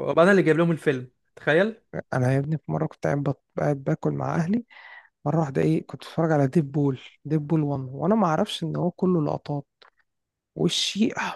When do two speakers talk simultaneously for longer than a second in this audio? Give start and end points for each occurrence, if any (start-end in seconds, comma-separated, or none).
none